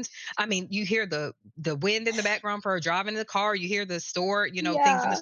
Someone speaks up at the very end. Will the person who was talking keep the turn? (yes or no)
yes